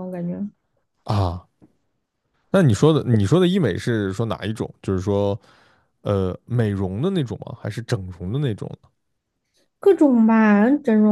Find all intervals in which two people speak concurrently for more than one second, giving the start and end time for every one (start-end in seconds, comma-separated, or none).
none